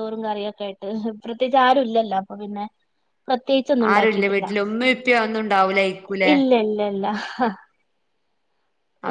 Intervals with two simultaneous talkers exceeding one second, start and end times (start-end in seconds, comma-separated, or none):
none